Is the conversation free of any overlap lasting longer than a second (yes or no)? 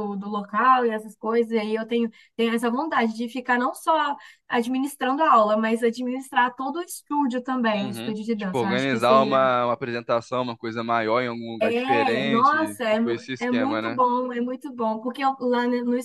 no